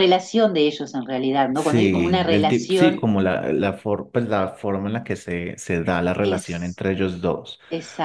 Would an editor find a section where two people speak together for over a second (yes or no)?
yes